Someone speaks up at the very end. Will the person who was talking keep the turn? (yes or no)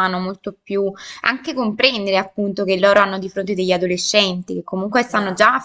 yes